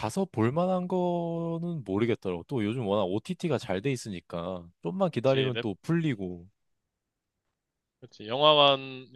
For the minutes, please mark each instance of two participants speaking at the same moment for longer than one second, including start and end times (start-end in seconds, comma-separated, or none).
none